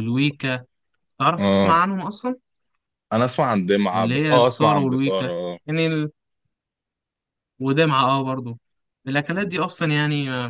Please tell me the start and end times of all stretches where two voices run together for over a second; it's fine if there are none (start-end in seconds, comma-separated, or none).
3.9-5.3